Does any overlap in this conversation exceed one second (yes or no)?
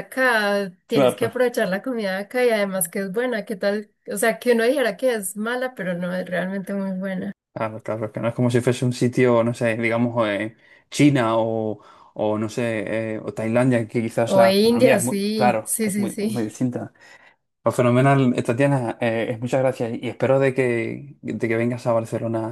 yes